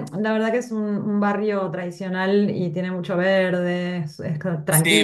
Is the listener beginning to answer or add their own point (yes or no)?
yes